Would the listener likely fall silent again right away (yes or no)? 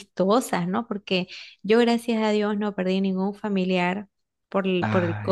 yes